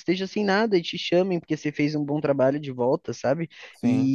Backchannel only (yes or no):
yes